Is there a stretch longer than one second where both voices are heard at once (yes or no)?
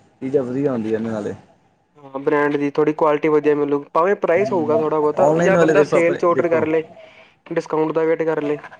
yes